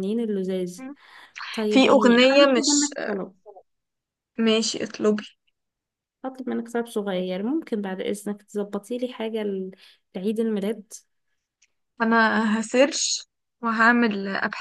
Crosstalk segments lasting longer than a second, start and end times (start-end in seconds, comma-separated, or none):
1.7-2.9